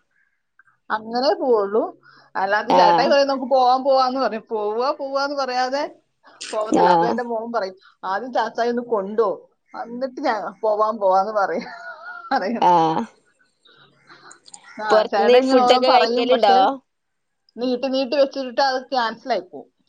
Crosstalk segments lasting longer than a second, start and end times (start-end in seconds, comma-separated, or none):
14.9-16.6